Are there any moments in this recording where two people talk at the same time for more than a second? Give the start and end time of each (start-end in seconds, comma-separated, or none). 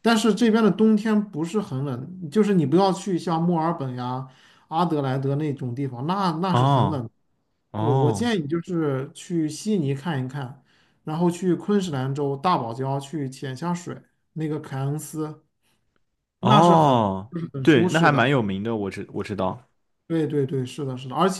16.4-18.3